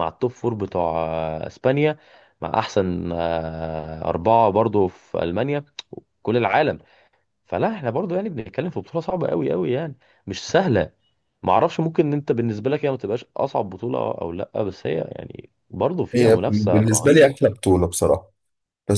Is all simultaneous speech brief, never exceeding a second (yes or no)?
no